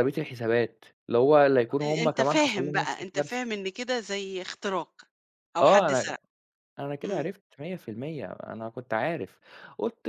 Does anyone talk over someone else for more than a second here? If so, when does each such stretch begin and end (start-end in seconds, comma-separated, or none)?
1.7-3.6